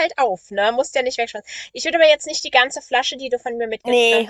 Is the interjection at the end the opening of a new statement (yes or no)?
no